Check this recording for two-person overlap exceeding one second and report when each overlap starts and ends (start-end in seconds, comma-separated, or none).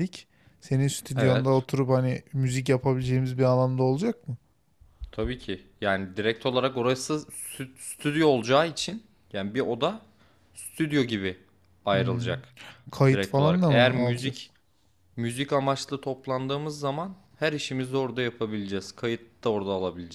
13.1-14.5